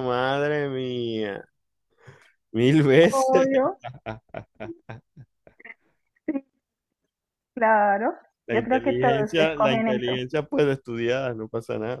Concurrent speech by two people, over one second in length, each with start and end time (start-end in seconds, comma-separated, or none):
8.5-10.2